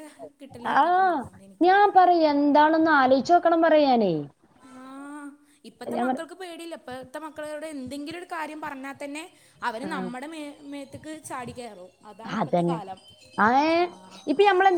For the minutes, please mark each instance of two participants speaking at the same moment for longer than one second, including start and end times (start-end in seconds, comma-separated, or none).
none